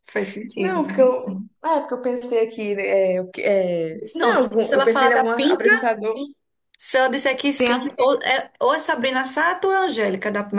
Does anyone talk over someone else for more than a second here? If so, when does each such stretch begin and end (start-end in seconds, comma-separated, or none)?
4.2-5.7